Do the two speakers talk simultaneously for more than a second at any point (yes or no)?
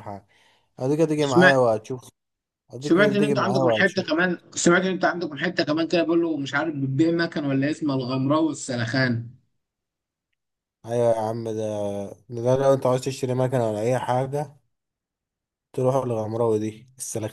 yes